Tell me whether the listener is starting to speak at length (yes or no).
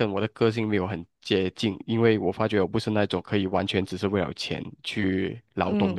yes